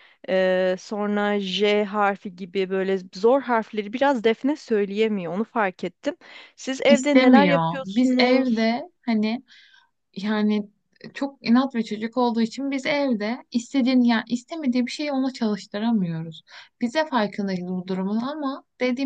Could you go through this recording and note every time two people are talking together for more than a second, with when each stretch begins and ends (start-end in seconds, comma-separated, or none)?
6.9-8.7